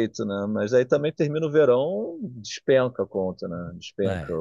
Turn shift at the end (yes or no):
no